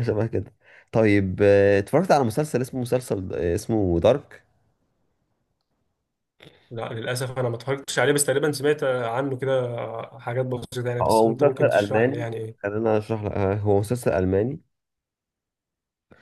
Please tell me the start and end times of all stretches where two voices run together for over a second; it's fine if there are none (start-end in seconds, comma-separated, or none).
11.0-12.7